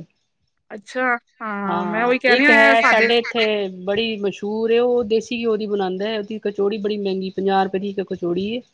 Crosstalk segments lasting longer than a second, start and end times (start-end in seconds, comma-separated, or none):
none